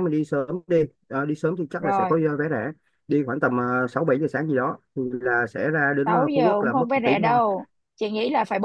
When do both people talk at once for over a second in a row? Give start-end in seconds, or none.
6.0-7.4